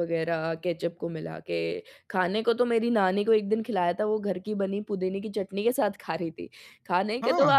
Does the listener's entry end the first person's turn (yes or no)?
no